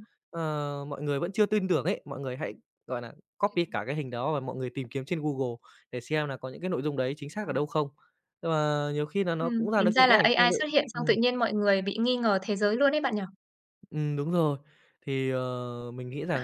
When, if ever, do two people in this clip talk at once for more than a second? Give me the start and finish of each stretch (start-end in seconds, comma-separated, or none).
9.4-11.1